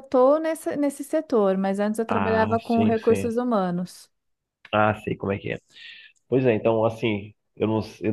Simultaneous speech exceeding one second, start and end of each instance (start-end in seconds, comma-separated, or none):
2.1-3.3